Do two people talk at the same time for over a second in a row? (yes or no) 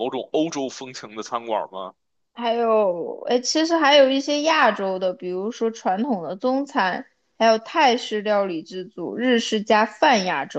no